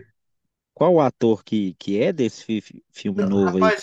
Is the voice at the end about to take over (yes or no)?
yes